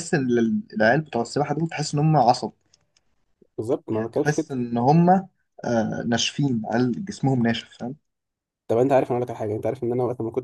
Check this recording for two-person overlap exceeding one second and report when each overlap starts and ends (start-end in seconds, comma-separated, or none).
none